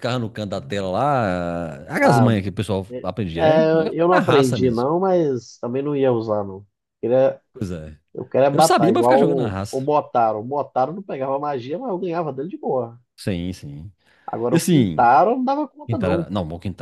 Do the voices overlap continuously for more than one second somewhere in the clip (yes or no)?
yes